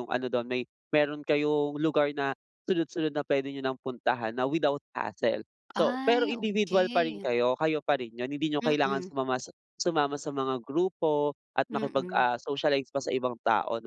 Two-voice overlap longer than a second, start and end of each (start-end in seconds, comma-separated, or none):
5.7-7.3